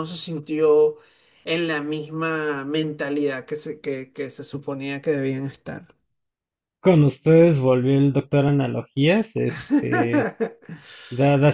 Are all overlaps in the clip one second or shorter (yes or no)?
yes